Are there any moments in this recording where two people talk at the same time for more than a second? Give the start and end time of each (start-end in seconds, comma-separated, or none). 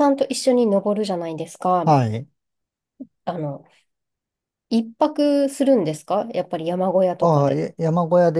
none